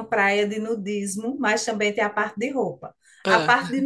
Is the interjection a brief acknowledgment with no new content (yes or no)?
yes